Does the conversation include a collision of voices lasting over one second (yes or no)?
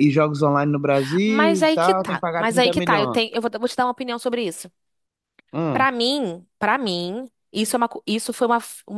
yes